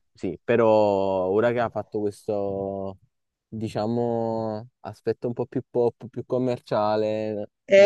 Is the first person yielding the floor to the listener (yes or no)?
yes